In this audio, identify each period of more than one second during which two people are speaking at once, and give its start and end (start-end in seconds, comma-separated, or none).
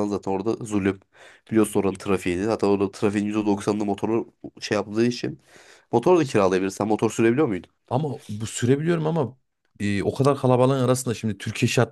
none